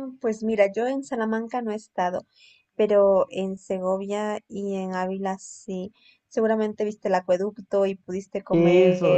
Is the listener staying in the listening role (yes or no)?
no